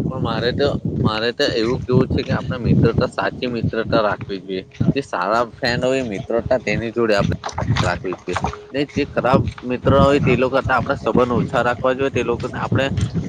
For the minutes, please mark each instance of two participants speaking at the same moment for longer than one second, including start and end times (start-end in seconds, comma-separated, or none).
10.4-12.2